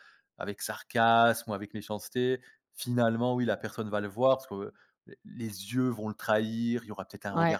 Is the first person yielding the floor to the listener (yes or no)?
yes